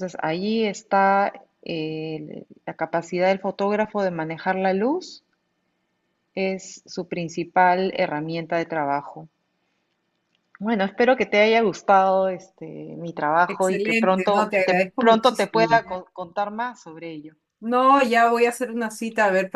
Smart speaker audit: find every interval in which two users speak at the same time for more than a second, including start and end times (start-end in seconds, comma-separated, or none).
13.5-15.8